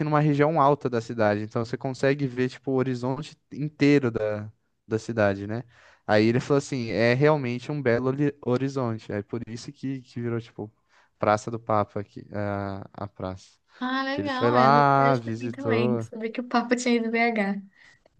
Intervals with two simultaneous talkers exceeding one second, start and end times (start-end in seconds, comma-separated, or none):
14.1-16.1